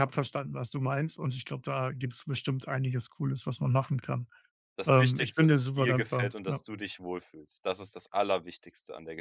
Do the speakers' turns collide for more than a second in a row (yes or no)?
yes